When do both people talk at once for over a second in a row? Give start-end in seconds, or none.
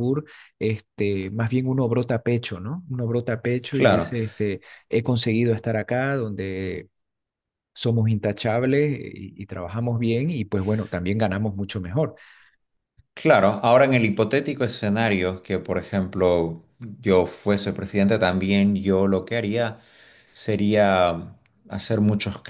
none